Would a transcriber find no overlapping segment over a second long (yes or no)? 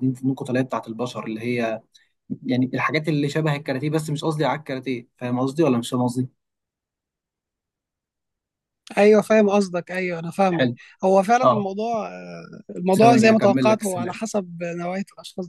no